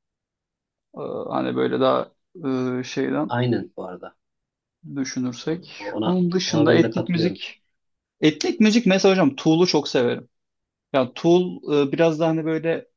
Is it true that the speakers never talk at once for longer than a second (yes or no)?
no